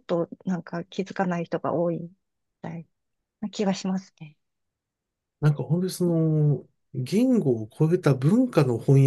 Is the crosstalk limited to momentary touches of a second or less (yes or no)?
yes